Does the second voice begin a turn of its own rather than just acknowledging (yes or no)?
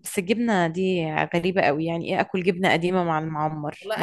yes